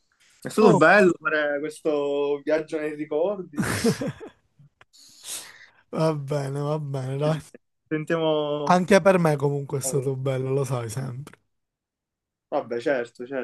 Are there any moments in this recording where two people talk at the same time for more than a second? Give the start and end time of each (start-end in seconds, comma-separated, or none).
none